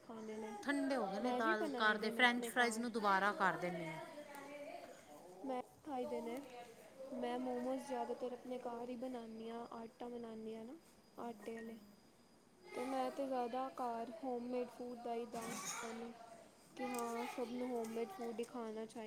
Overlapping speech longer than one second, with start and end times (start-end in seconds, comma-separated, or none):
1.2-2.9